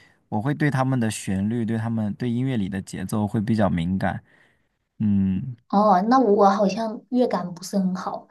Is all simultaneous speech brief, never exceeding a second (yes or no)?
yes